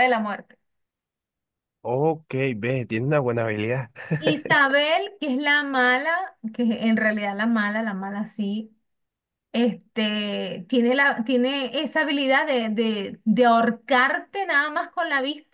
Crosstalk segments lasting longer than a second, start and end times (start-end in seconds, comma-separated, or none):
none